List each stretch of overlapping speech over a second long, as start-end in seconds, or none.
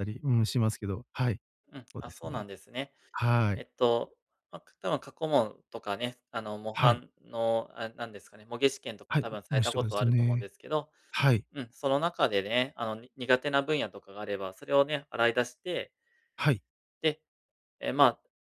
9.1-10.5